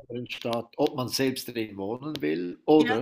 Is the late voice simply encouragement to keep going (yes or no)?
yes